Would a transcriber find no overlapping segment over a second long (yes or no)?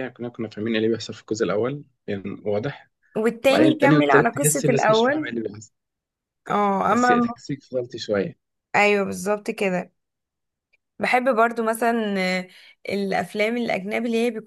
no